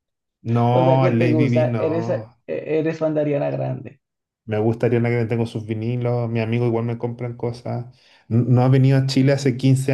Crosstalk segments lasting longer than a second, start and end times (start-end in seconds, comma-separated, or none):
0.7-2.3